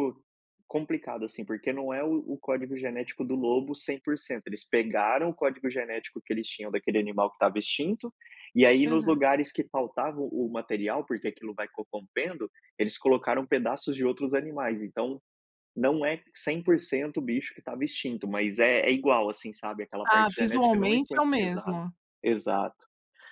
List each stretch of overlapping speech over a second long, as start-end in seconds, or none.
20.0-21.8